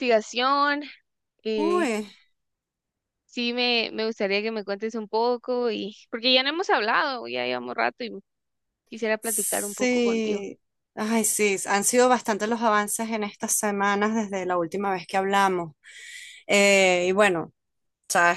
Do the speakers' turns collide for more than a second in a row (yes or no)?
yes